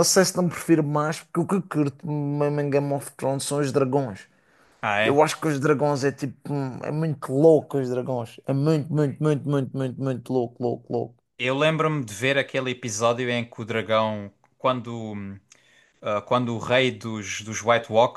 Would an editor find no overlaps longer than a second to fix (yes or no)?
yes